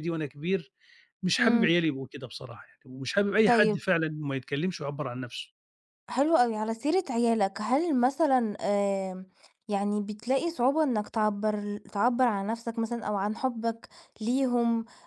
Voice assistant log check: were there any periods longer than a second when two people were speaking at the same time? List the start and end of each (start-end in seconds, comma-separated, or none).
none